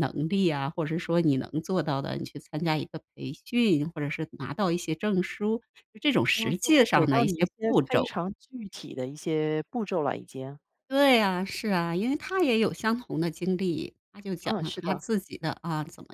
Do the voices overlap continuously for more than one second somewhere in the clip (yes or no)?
yes